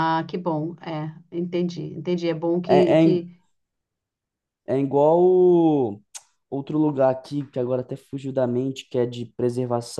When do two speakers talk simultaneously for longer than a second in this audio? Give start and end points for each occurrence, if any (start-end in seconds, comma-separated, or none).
none